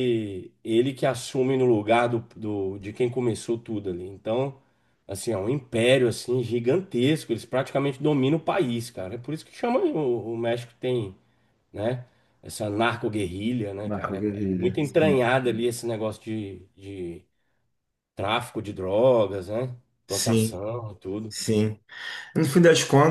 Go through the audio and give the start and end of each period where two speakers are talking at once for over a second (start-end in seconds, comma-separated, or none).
13.9-15.2